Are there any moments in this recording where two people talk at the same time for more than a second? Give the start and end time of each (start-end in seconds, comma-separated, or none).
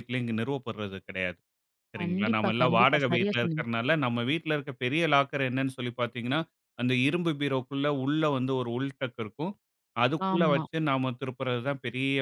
2.0-3.7